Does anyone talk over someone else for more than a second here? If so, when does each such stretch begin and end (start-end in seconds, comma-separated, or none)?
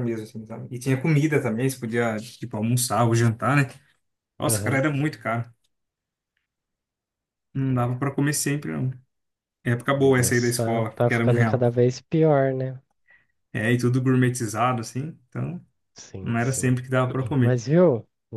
9.9-11.7